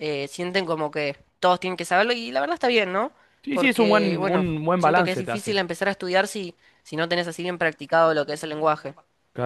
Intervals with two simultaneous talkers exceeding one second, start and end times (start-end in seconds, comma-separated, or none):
3.5-5.6